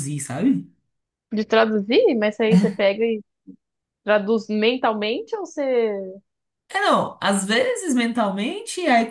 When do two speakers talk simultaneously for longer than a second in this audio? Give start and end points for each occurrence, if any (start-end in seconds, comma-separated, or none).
none